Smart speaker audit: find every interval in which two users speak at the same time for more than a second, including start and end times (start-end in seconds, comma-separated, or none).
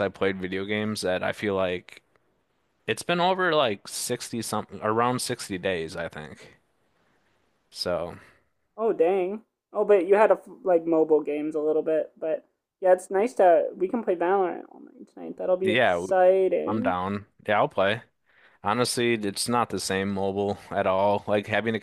none